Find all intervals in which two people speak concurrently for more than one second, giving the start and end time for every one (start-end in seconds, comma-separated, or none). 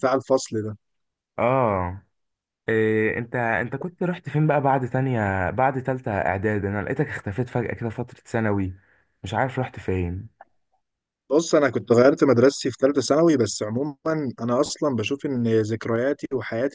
none